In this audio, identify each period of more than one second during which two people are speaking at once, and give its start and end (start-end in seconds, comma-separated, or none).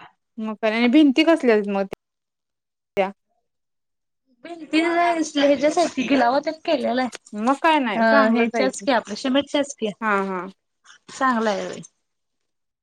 7.5-8.8